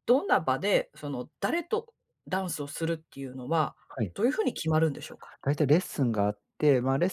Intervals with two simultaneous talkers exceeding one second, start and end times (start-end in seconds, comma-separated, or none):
none